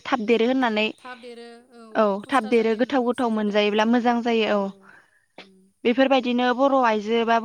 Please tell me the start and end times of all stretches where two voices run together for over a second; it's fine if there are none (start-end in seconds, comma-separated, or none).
2.2-4.1